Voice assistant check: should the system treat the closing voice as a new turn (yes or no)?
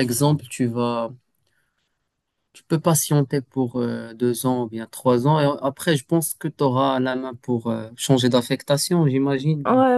yes